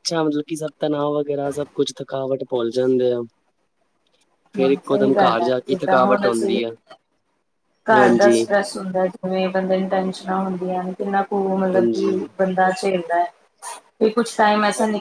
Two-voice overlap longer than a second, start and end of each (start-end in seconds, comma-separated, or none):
4.6-6.6